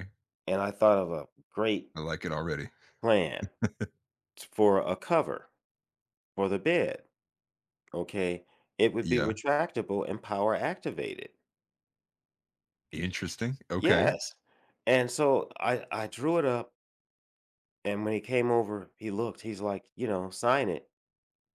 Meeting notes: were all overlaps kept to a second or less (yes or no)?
yes